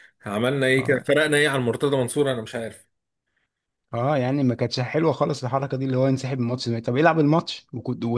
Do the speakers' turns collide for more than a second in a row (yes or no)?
no